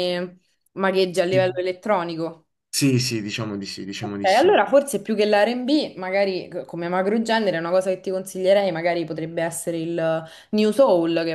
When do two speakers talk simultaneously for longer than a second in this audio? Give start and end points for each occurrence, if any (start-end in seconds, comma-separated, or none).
none